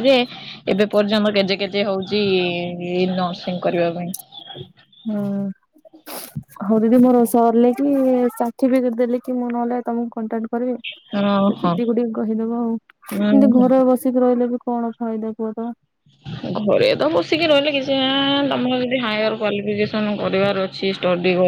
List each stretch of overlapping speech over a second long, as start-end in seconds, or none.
none